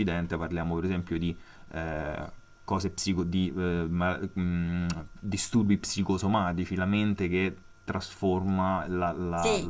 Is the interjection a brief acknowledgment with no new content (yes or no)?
no